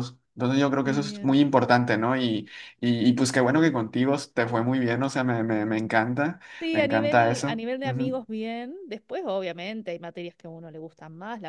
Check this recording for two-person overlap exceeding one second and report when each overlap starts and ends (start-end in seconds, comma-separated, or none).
6.6-8.2